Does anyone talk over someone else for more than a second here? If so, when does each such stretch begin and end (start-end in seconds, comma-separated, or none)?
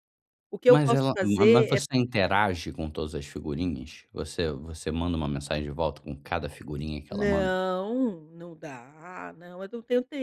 0.7-2.0